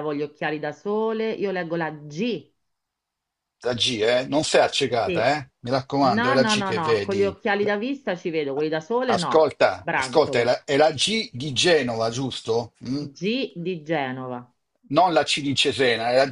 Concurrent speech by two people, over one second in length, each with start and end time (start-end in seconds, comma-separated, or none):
6.0-7.7, 9.1-10.6